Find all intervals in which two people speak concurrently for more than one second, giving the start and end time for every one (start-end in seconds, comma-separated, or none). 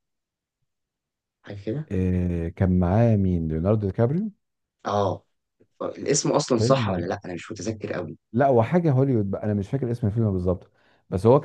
none